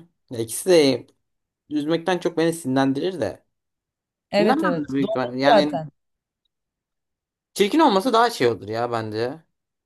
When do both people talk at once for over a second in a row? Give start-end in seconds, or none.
4.4-5.8